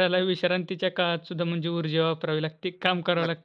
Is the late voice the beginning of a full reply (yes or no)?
yes